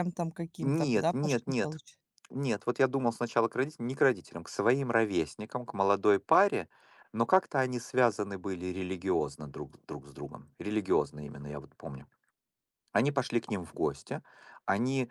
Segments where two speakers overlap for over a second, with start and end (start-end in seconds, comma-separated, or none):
0.6-1.8